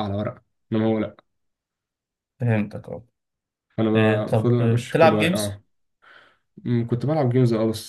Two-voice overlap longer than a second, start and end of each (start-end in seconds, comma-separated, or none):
3.9-5.6